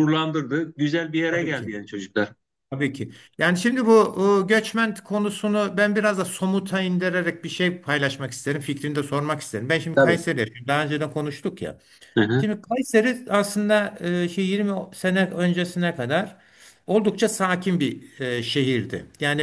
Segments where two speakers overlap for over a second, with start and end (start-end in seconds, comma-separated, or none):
none